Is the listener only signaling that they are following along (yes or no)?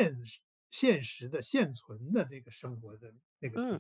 no